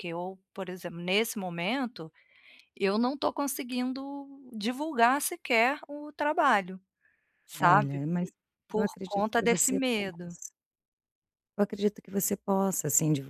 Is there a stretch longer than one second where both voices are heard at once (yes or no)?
yes